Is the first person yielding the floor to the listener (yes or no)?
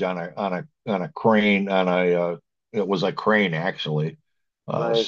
no